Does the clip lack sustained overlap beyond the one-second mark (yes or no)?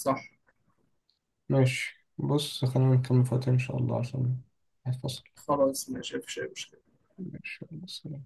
yes